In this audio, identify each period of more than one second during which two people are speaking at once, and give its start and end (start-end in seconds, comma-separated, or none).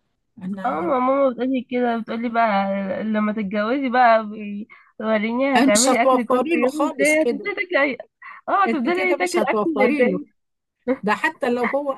5.6-7.5, 8.7-10.2